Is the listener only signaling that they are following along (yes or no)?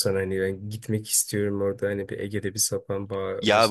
no